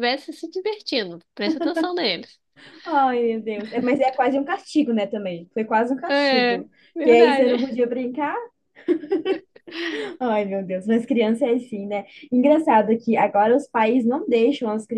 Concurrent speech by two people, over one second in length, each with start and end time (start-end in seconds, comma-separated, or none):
6.1-7.8